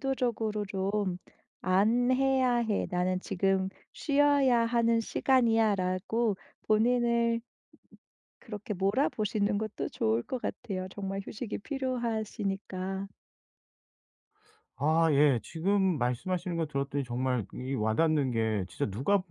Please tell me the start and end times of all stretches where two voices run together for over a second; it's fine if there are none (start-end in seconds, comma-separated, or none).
none